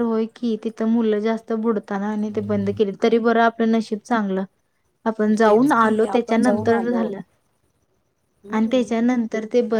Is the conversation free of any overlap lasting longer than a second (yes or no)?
no